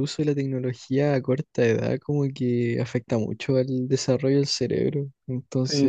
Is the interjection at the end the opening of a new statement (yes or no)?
yes